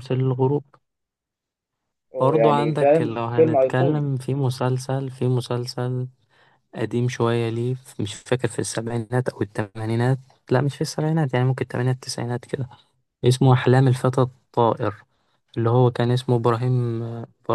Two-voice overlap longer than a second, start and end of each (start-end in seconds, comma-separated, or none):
2.2-4.1